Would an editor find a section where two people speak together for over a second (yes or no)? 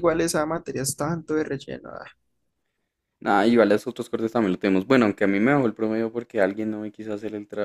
no